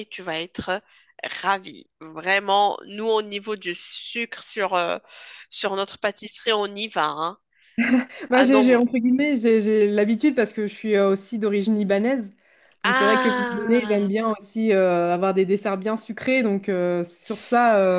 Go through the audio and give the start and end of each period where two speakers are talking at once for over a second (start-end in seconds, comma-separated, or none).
12.8-14.1